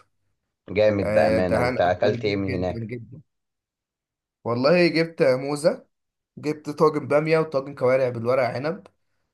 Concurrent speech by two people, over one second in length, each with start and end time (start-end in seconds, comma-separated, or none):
1.0-2.9